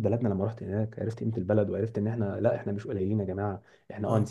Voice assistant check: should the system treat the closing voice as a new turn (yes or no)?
no